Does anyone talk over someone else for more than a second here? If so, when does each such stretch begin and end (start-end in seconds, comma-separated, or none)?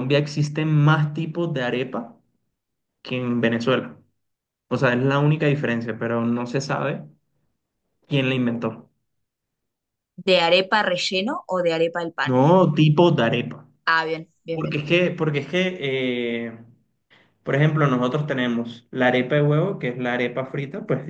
none